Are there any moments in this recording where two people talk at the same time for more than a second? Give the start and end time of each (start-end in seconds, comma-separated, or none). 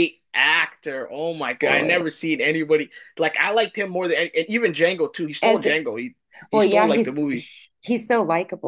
none